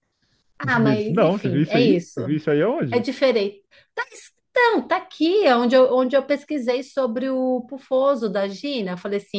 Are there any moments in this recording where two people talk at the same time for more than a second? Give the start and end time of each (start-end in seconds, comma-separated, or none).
0.6-2.2